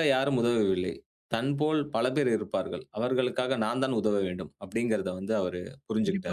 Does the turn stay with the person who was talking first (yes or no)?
no